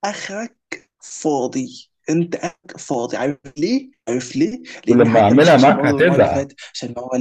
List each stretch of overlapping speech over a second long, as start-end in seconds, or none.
4.9-6.5